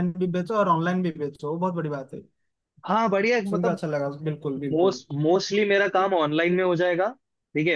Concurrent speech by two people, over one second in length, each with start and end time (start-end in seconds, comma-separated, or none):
none